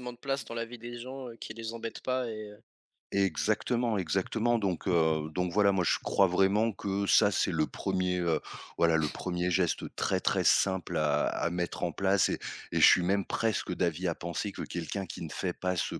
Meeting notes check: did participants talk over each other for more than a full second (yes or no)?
no